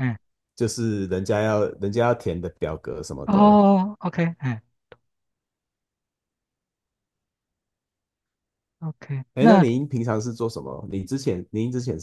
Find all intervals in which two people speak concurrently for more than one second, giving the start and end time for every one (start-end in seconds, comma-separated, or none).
none